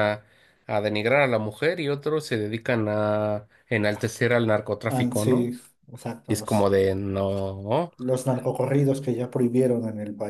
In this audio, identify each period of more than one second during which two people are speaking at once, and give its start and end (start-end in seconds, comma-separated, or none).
none